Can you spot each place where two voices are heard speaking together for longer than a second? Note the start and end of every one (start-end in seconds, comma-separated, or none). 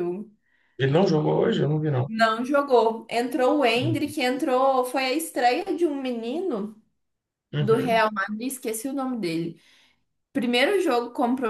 none